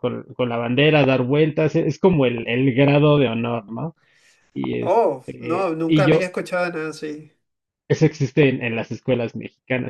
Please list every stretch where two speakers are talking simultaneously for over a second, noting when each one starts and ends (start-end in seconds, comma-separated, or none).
4.8-6.3